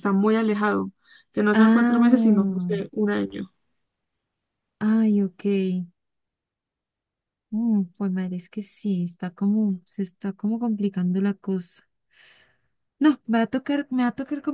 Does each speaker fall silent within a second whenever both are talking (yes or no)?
no